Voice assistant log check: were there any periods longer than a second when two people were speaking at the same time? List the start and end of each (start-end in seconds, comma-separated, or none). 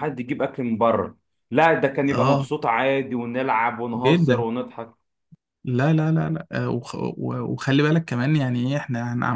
none